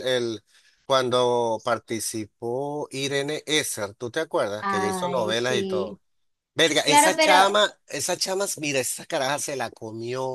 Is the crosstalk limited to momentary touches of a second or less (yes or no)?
no